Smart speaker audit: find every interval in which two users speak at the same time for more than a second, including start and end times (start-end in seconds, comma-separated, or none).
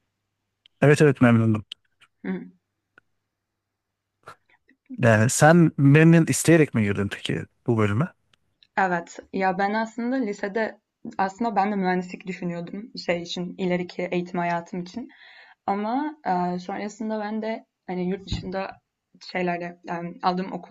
none